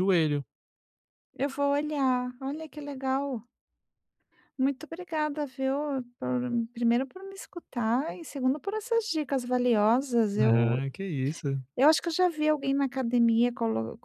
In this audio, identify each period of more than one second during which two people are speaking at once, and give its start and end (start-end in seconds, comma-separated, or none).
none